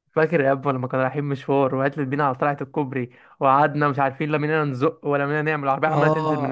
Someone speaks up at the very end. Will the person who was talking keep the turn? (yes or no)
no